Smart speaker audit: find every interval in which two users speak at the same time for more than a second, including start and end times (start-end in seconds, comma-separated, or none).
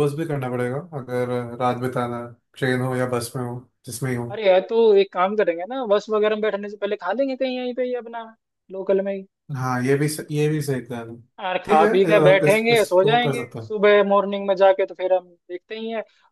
11.7-13.7